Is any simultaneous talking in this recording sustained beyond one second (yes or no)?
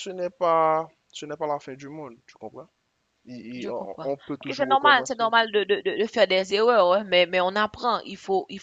yes